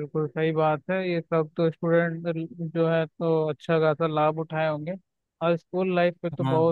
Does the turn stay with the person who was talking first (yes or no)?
yes